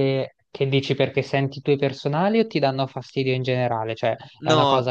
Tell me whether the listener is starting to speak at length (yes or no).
no